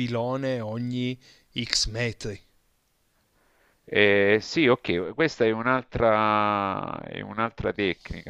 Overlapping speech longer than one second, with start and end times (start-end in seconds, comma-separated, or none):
none